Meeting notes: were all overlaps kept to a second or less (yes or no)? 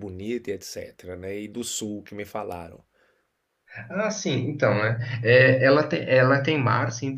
yes